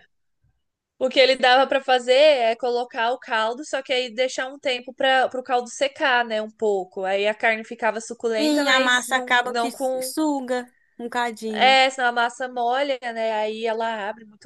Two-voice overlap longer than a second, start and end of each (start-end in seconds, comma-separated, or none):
8.4-10.1